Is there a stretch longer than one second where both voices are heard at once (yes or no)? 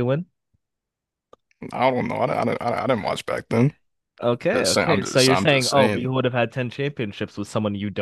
yes